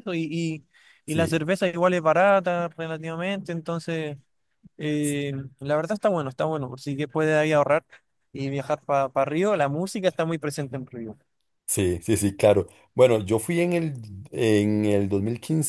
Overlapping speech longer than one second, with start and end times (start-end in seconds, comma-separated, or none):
none